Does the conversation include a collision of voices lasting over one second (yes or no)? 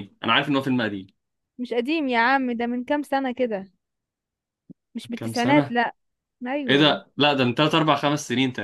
no